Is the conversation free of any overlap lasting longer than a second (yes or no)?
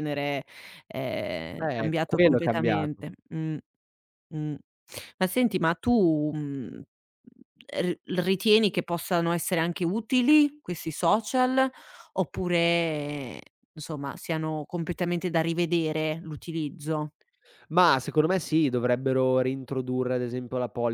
no